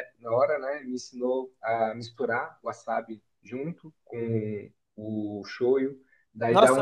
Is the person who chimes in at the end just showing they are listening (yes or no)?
no